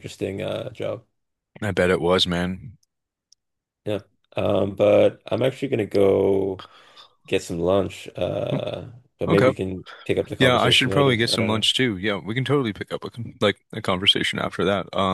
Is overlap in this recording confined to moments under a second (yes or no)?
no